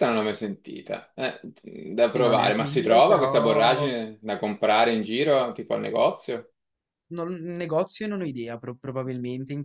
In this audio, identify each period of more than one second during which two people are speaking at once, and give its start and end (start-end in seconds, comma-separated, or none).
2.1-3.9